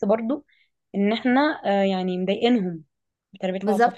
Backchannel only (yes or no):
no